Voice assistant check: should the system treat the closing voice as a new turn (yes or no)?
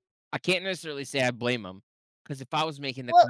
no